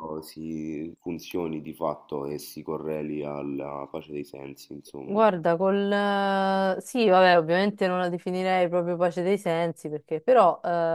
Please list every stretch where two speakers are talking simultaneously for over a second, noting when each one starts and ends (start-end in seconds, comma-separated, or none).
none